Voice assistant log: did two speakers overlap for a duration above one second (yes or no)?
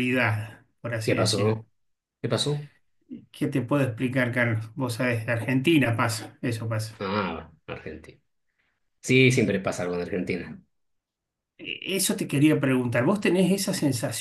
no